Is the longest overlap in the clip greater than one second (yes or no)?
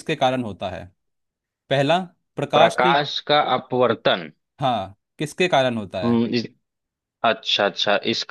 no